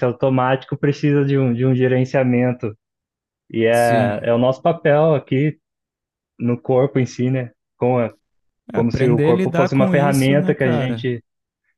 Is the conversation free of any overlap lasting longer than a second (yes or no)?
no